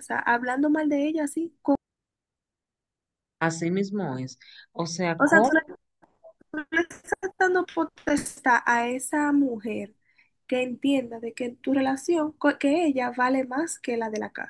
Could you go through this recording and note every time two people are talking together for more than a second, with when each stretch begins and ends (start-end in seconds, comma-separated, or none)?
none